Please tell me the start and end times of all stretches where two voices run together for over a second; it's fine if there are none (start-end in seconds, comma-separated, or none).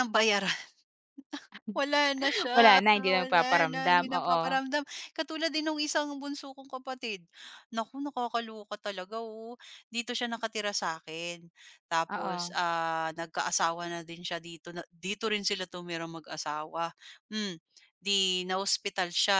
2.5-4.4